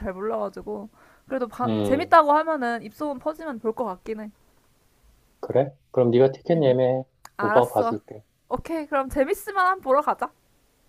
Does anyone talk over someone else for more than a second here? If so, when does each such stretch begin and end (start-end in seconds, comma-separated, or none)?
none